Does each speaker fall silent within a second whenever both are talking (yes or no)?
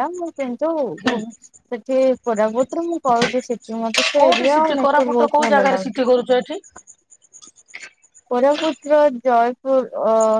no